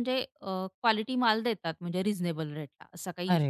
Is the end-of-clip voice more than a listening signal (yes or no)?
yes